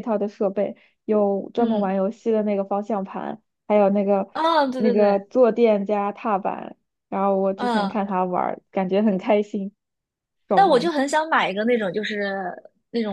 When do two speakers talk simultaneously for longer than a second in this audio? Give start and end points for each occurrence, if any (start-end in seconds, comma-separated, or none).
none